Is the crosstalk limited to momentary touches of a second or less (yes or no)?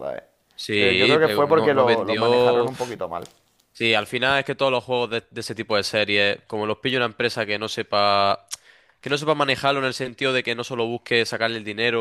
no